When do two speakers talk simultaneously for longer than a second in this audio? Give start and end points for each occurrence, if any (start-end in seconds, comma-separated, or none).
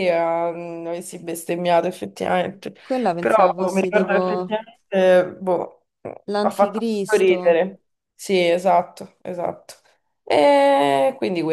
3.2-4.5, 6.4-7.6